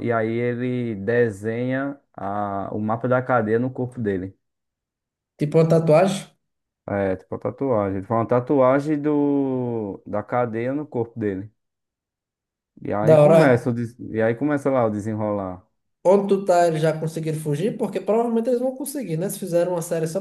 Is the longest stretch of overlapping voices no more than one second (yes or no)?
yes